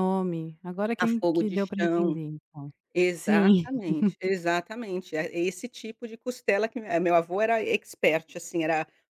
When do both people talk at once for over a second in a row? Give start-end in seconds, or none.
1.0-2.2